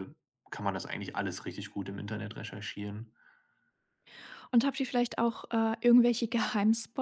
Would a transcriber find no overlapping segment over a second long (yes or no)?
yes